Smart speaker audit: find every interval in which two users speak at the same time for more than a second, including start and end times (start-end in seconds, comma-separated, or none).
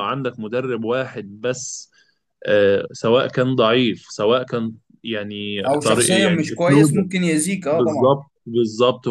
5.7-7.0